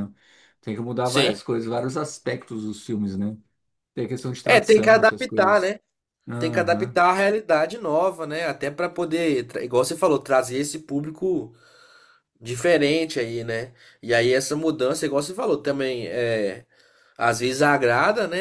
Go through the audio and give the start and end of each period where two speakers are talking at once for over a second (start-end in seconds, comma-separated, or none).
4.4-5.8